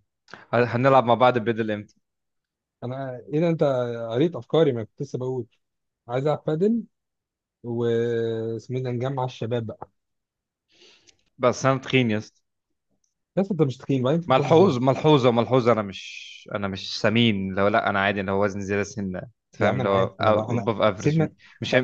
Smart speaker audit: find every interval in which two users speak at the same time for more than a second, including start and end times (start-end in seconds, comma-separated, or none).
19.6-21.3